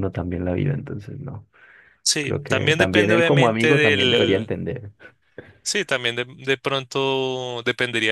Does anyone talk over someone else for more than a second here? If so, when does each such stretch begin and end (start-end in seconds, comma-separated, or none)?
2.2-4.5